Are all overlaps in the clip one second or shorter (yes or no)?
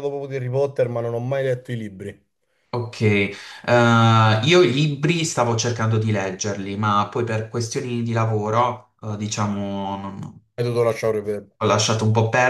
yes